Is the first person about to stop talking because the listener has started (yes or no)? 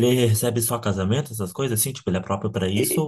yes